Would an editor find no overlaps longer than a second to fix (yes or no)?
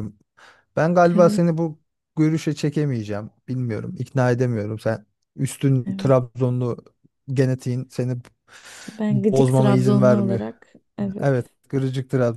no